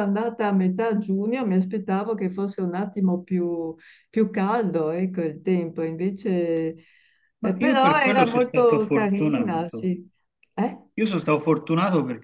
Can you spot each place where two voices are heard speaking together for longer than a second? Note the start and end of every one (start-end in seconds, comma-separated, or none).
7.4-9.9